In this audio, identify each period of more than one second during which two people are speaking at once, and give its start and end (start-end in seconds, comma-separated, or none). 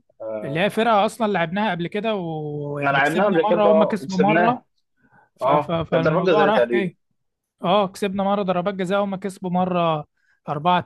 2.7-4.6, 5.4-6.9